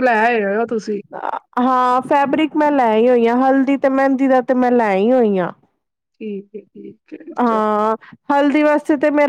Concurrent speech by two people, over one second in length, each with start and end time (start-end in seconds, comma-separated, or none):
none